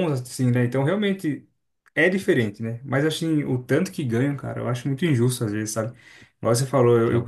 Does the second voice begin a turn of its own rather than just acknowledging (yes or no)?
no